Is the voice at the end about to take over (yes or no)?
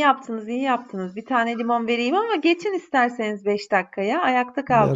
yes